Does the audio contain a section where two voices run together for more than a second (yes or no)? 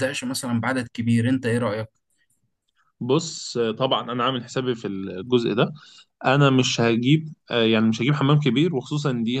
no